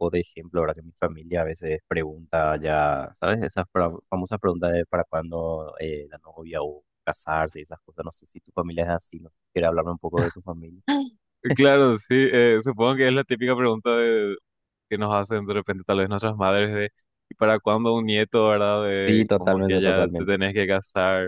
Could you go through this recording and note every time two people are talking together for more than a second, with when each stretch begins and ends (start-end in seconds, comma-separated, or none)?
19.1-20.4